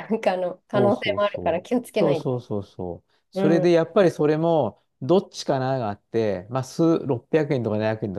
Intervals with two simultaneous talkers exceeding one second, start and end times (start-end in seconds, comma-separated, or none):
0.7-2.3